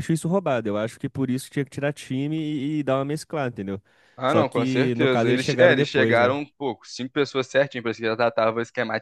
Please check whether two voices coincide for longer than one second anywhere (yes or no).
yes